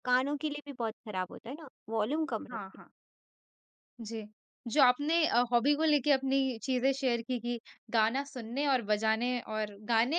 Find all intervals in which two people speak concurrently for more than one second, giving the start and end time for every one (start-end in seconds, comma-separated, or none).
none